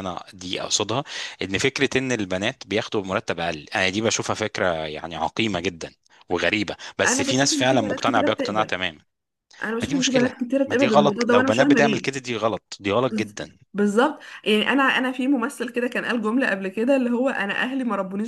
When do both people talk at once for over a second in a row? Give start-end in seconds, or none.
7.0-8.8, 9.8-12.1